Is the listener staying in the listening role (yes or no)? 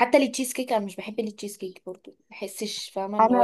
no